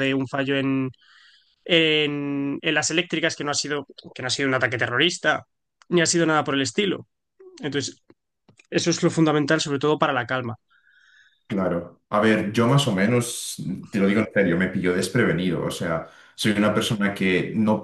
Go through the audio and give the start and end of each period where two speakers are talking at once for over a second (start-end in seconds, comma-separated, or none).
none